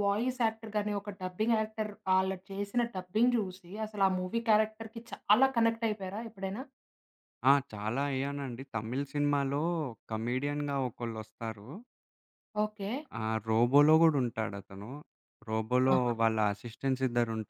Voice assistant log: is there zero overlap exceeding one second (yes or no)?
yes